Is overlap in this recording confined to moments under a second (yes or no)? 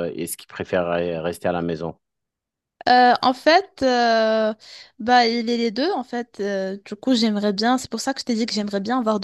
yes